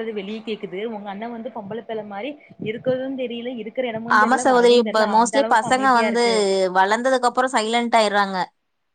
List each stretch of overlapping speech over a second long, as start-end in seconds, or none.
none